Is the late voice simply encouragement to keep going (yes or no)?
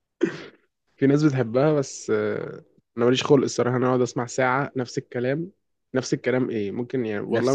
yes